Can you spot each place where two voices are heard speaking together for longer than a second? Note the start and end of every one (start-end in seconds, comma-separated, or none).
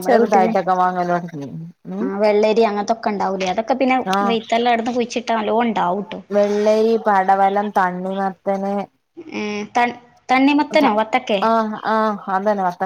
none